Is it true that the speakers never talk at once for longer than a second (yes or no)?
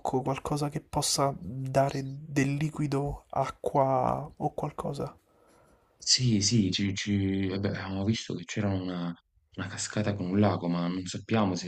yes